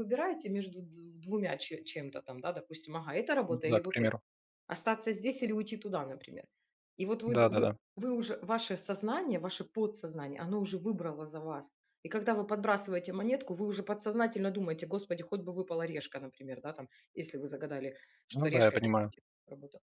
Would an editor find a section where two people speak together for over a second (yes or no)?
no